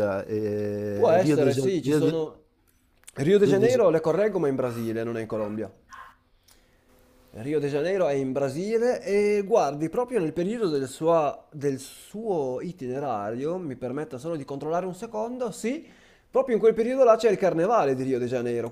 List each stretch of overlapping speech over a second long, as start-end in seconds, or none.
0.9-2.2